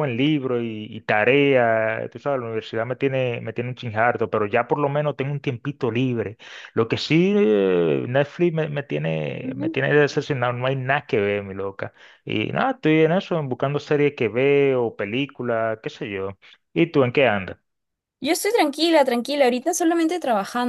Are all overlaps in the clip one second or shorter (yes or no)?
yes